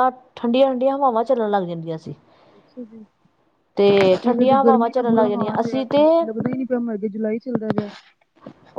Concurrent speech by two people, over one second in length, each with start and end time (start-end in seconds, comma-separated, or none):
4.3-6.2